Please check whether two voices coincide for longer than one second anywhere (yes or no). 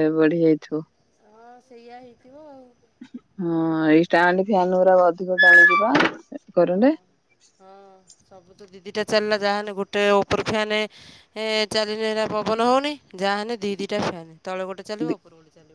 no